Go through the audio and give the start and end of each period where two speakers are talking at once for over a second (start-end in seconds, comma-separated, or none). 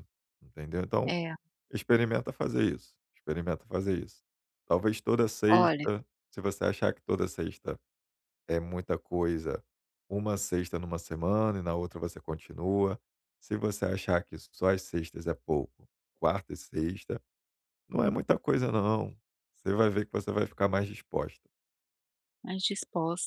none